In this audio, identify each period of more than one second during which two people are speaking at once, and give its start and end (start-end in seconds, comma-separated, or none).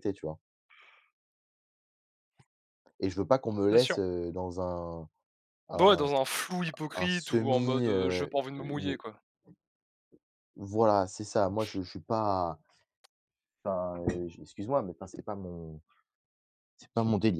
7.0-9.0